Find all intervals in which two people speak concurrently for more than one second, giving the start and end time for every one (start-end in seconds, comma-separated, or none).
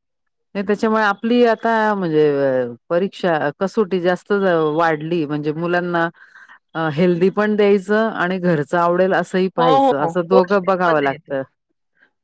9.6-11.3